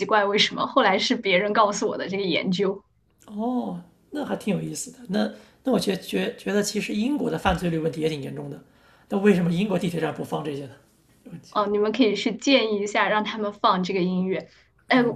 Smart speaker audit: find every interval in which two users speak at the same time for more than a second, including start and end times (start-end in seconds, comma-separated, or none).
none